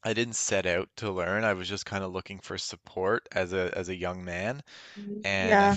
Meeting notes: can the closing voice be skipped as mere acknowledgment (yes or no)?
yes